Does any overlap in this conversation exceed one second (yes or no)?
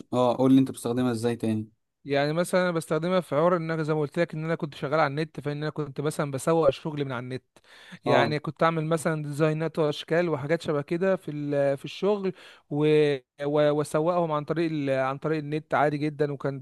no